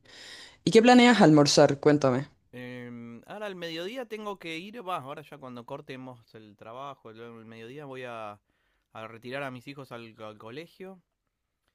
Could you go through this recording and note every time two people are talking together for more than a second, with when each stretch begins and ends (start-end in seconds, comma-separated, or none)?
none